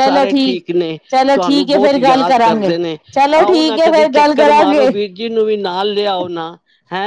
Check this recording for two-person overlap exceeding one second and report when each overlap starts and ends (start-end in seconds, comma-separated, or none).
1.3-2.7, 3.4-4.9